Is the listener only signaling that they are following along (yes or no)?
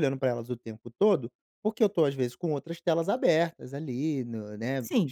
no